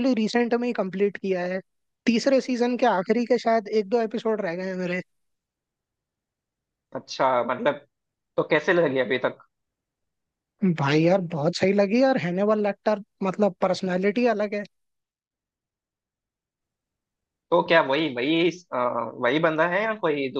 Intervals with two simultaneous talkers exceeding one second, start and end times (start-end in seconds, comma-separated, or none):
none